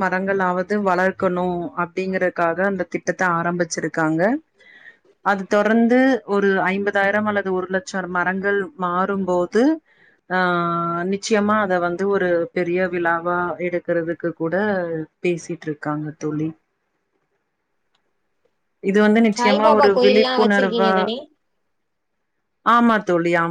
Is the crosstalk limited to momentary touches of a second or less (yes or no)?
no